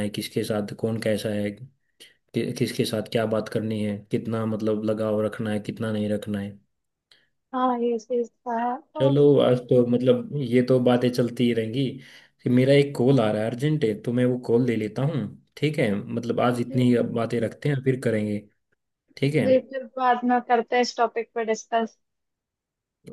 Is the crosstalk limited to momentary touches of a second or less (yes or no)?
yes